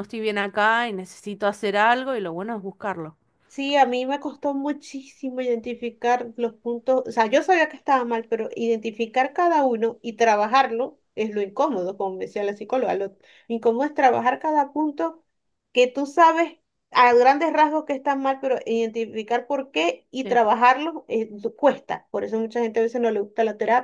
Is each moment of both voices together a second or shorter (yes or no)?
yes